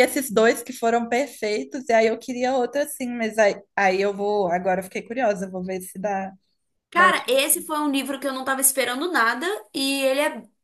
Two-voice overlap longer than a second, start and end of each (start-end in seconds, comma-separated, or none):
none